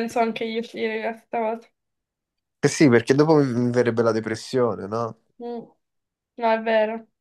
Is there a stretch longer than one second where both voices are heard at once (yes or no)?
no